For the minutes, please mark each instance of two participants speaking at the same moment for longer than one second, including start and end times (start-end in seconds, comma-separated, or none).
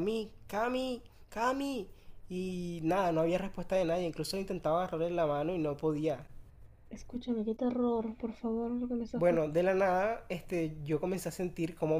none